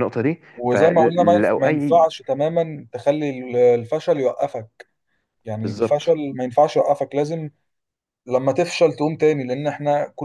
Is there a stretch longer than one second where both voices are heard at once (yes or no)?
yes